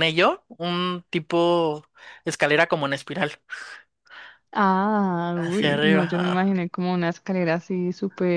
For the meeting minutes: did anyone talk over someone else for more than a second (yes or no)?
yes